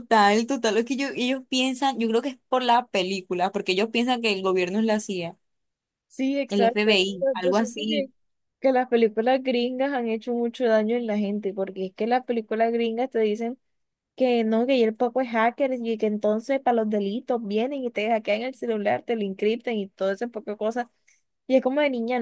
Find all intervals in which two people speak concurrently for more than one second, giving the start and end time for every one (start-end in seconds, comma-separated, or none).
6.5-8.1